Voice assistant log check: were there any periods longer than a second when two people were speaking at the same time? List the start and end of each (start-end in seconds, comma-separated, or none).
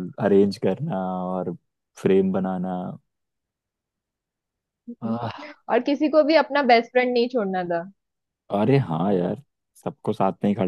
none